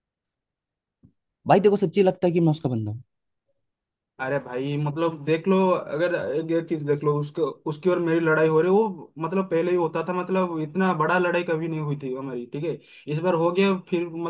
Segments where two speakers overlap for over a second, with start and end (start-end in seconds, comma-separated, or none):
none